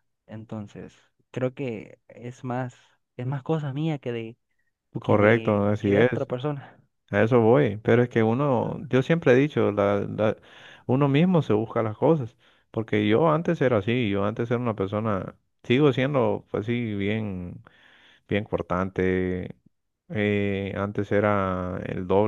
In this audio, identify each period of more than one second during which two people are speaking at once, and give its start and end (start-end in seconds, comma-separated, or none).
5.0-6.3